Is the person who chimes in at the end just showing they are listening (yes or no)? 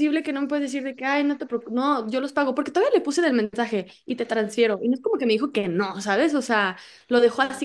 yes